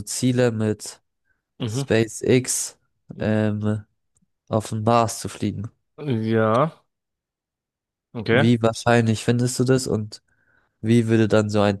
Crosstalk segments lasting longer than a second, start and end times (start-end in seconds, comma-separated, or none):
none